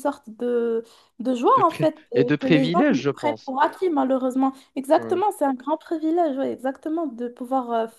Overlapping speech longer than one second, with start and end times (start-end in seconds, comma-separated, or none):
1.6-3.5